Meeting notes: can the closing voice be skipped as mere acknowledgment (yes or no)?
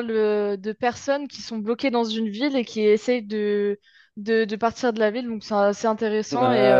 no